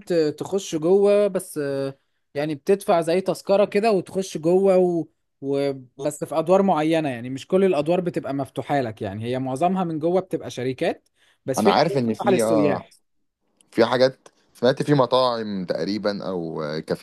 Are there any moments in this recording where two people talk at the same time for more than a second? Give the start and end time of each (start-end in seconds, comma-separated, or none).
11.6-12.9